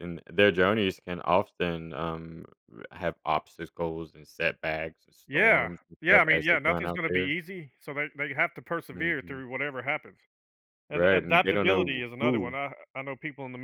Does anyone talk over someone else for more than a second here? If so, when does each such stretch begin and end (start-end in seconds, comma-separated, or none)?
5.3-7.3, 10.9-12.6